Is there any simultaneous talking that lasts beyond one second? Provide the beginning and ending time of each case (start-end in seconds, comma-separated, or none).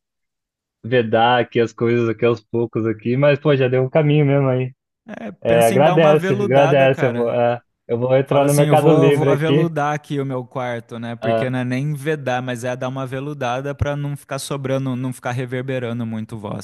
5.4-7.4, 8.2-9.7